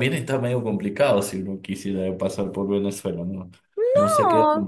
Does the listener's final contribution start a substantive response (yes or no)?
yes